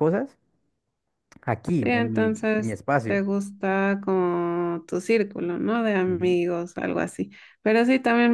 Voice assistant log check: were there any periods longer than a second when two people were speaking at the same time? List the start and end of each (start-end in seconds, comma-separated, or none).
1.8-3.2